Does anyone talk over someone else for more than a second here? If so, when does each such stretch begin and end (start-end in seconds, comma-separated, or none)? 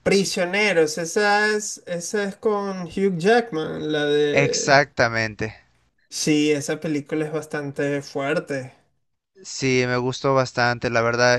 none